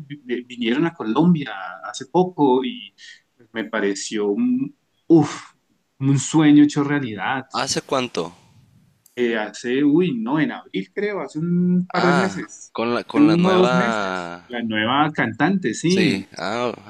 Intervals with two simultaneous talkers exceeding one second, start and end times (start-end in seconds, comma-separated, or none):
11.9-14.4